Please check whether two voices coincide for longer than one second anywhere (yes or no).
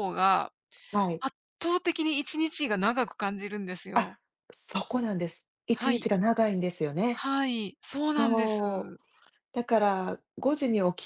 no